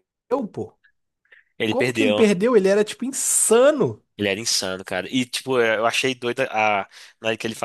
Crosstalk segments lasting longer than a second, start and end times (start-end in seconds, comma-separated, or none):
none